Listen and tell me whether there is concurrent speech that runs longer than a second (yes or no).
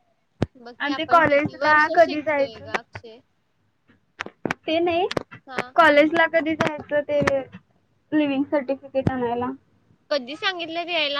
yes